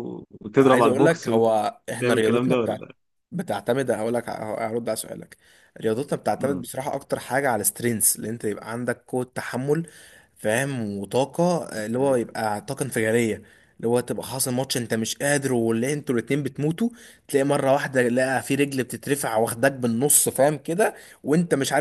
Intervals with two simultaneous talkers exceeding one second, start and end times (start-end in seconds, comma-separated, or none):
0.6-2.9